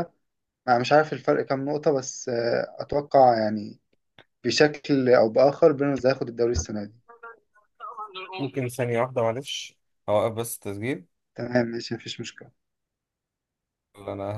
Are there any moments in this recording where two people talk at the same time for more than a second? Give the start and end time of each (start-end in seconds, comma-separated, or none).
none